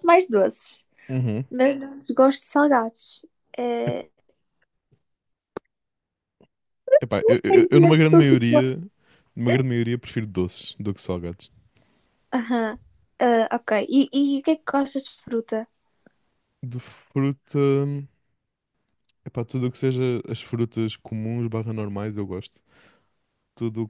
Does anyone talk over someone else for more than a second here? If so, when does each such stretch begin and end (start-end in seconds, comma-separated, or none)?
7.5-8.7